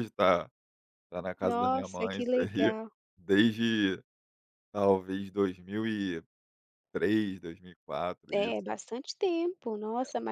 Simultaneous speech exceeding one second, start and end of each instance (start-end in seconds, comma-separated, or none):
1.4-2.7